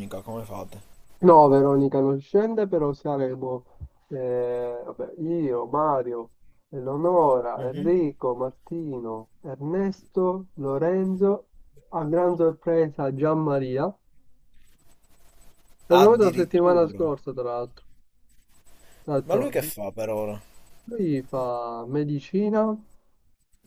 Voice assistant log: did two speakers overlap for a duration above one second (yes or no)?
yes